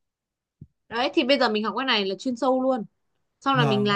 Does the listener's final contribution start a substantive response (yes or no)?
yes